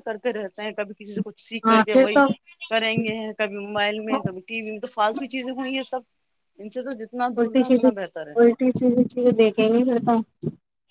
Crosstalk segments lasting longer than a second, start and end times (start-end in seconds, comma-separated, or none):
none